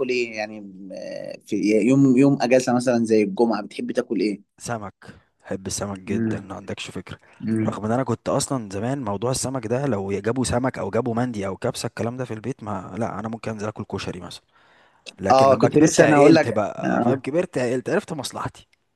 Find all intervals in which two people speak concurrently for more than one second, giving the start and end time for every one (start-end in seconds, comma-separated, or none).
15.3-17.2